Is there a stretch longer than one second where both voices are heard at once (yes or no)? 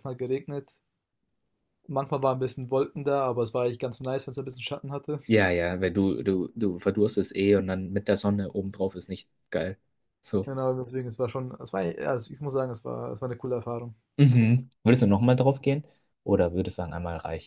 no